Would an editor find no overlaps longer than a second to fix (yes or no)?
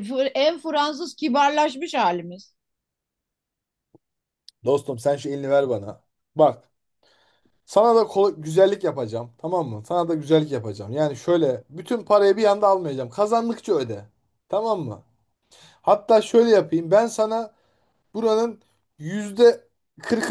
yes